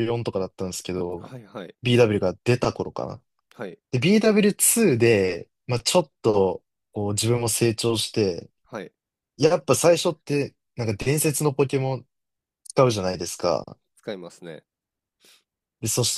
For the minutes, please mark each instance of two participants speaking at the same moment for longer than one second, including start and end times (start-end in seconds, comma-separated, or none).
none